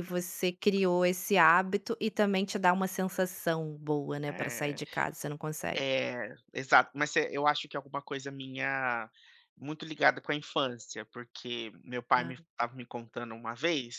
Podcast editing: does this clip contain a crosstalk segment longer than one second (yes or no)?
no